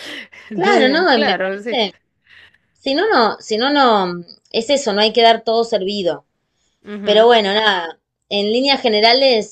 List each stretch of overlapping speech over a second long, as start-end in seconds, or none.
0.5-1.8